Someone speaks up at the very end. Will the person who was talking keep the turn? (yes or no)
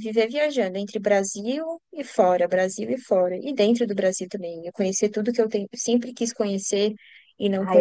no